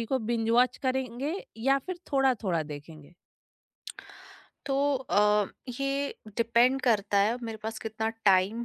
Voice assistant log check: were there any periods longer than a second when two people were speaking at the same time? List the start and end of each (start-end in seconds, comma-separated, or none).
none